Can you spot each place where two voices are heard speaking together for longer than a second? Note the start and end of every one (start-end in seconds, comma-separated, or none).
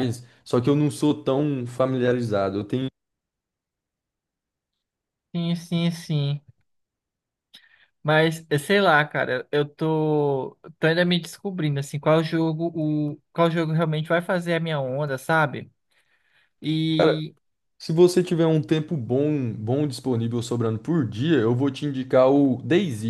none